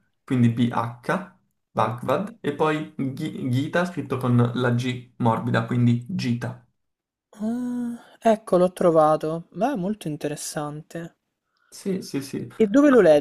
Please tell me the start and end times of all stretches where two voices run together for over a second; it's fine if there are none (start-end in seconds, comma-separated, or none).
none